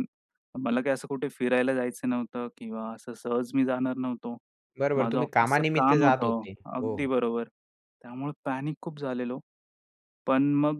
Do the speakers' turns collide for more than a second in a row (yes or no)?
yes